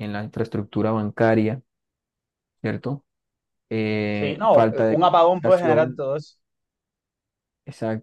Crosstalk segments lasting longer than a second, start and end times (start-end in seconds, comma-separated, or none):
4.1-6.0